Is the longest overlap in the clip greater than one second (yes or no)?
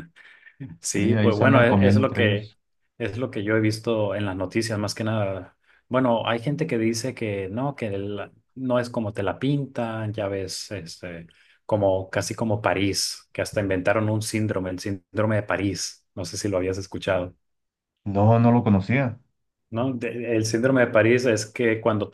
yes